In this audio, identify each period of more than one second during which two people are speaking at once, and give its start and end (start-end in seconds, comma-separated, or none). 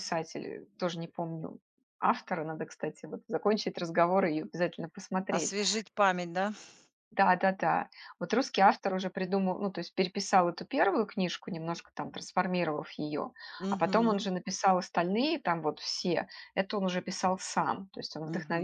none